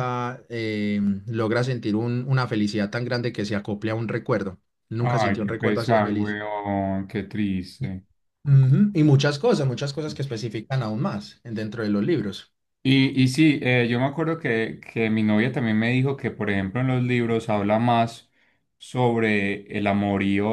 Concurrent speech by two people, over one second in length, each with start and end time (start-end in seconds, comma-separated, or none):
5.0-6.4